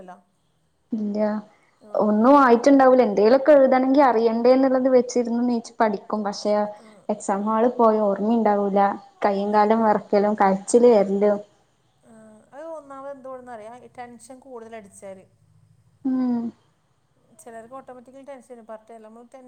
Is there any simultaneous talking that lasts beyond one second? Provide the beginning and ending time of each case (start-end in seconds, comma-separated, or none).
none